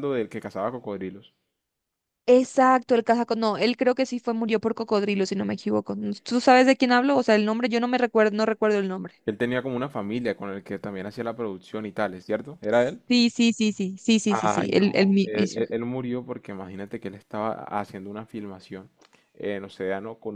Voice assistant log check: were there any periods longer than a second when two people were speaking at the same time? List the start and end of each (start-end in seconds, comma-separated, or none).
14.3-15.6